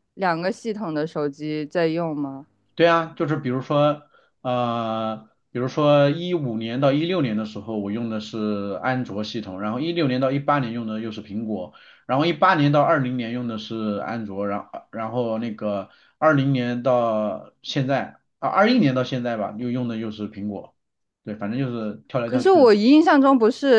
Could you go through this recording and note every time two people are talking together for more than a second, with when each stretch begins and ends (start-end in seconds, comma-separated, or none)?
none